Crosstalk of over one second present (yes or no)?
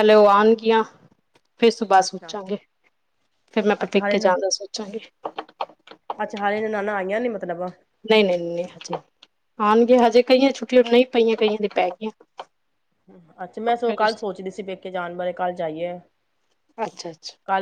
no